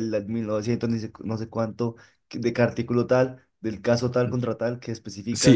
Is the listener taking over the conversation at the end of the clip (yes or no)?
yes